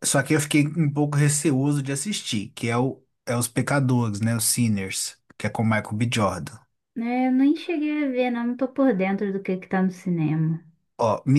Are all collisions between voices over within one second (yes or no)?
yes